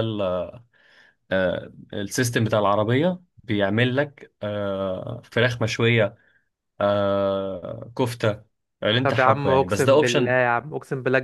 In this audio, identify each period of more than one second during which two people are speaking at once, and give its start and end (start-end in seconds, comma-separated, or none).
9.0-10.3